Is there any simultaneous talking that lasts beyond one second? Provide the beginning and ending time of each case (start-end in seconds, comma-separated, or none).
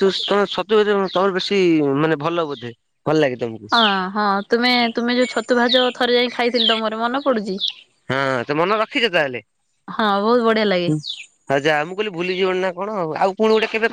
none